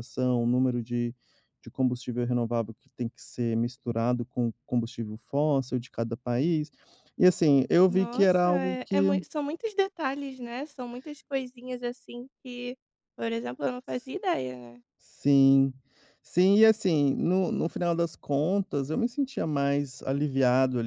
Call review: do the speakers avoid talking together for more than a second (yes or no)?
no